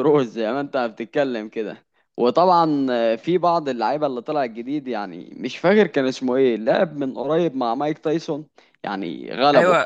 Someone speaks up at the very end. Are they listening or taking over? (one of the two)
taking over